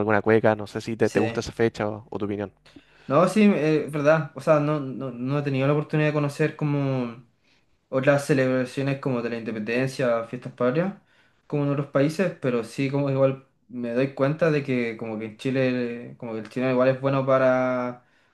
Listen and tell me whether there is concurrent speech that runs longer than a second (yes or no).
no